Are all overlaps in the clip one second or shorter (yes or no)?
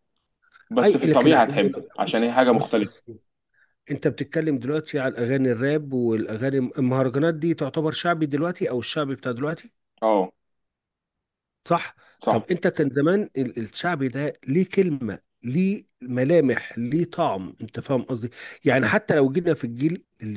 no